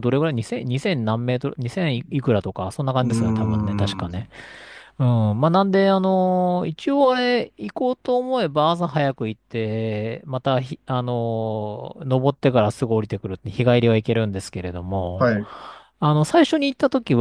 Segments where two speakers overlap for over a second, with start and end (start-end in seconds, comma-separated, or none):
3.0-4.3